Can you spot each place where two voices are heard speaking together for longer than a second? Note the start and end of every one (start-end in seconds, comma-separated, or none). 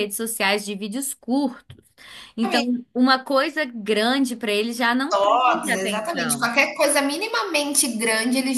5.1-6.5